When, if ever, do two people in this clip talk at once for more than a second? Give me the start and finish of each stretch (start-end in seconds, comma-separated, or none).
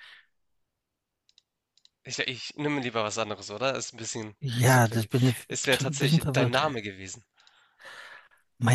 4.4-6.6